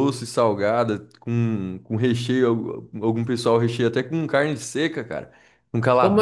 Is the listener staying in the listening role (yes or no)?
no